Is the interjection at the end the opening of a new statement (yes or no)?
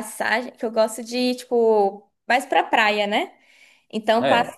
no